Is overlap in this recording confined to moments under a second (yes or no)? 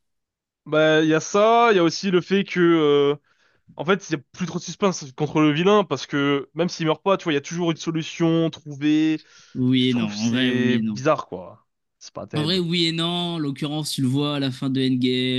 no